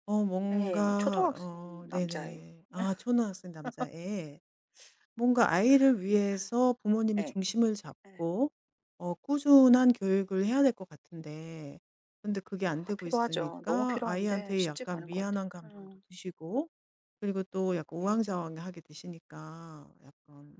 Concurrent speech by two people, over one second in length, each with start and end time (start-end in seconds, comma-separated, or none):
0.5-2.4, 12.7-16.0